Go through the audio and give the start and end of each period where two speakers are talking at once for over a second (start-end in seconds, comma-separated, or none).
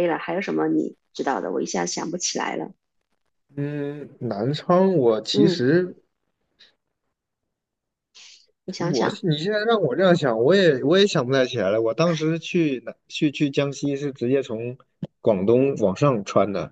none